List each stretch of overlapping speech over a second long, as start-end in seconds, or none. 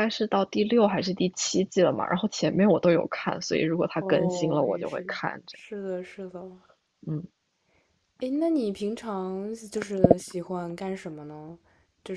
4.0-5.6